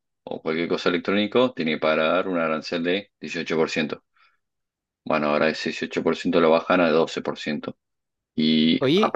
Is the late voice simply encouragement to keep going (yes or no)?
yes